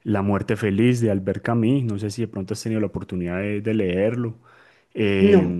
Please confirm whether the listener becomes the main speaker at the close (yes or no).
no